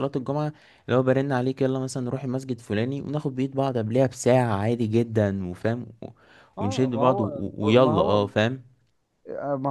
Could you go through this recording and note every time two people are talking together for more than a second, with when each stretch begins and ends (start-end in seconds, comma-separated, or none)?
6.6-8.2